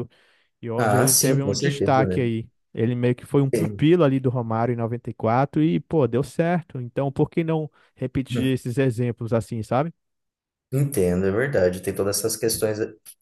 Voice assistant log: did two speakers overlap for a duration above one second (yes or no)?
yes